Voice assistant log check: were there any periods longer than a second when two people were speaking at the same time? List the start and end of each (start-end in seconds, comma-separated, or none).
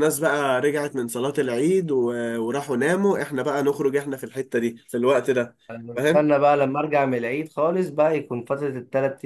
none